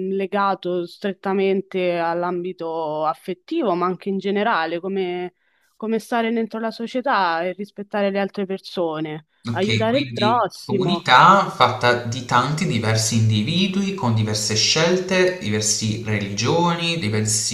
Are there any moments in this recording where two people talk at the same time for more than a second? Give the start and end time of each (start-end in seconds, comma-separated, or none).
9.5-11.1